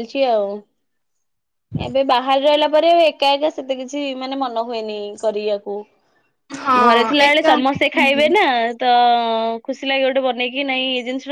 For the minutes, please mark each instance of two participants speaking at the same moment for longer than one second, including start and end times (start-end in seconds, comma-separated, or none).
6.8-8.3